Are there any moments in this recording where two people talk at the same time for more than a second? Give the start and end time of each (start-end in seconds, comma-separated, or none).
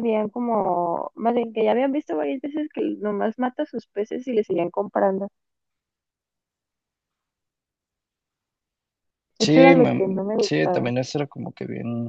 9.4-10.9